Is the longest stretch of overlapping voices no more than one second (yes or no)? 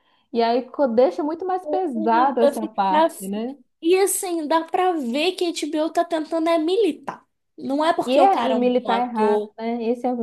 no